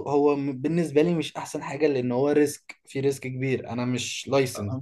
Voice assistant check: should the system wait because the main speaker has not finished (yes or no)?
no